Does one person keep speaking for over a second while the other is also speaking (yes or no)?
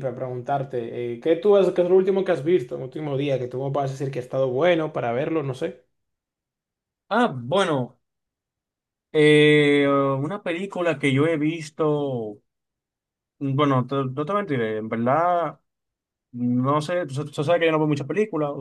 no